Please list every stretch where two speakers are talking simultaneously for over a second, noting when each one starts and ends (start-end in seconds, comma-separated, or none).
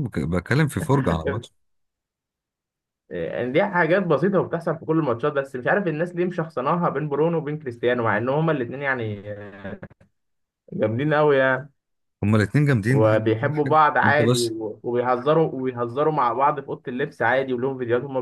12.9-14.5